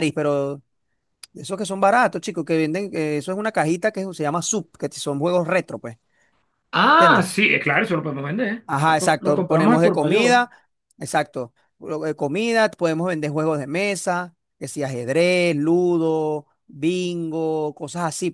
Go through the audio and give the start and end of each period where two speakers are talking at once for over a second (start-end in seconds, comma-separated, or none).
8.7-10.4